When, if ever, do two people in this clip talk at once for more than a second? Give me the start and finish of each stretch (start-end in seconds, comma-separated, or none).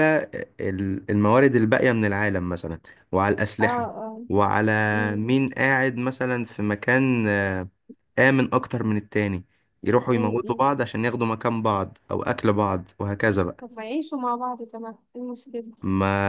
none